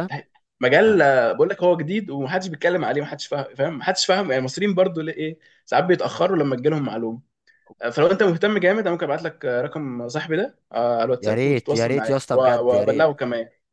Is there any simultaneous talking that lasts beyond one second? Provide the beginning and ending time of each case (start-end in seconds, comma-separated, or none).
11.2-13.1